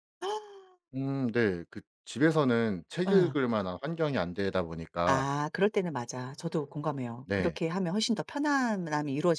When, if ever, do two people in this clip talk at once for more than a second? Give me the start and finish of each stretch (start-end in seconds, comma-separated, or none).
none